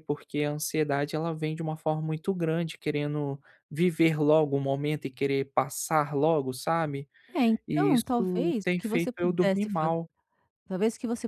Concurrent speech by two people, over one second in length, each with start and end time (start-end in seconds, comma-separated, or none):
7.7-9.9